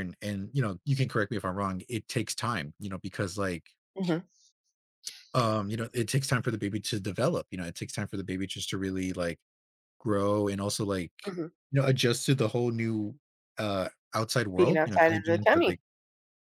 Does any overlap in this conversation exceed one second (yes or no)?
yes